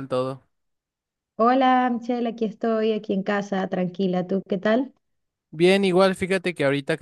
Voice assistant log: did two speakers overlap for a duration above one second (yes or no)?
no